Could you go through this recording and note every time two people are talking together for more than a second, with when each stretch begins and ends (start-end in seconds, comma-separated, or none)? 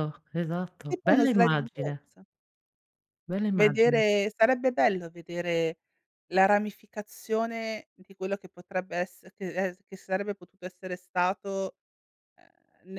0.9-2.1